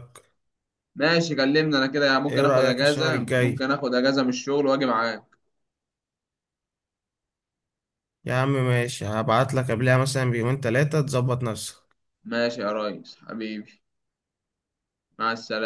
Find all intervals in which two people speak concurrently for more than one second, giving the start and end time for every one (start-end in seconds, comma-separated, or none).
2.3-3.7